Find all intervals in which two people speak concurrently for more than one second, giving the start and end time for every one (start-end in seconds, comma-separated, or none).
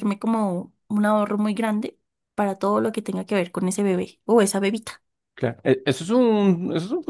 none